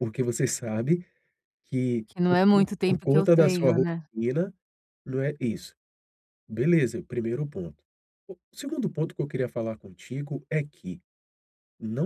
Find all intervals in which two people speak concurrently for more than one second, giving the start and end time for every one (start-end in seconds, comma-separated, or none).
2.1-4.1